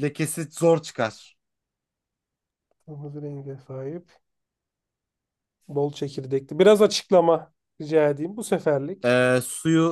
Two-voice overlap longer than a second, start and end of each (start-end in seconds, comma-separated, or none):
none